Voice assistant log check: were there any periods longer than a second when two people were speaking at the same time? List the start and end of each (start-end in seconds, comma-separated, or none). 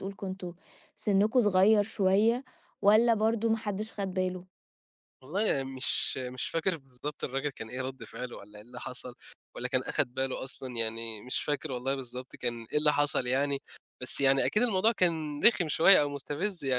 none